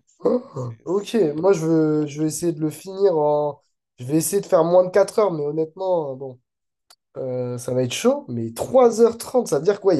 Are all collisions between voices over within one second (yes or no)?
no